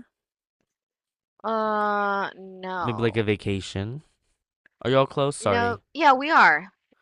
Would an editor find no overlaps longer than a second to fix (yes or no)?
yes